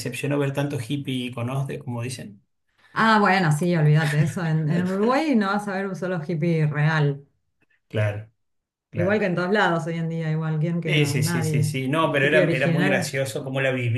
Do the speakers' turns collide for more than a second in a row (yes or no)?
yes